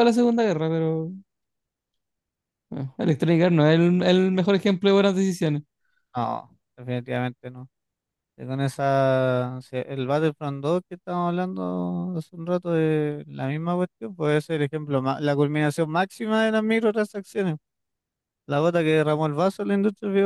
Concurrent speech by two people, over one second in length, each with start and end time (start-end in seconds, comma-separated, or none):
none